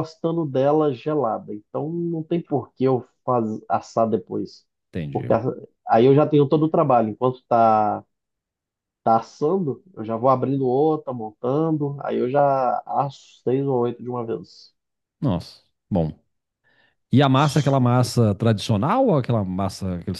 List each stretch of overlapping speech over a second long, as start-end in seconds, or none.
none